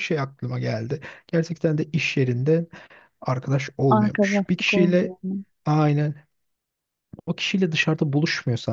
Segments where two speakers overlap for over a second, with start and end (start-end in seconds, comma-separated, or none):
3.9-5.1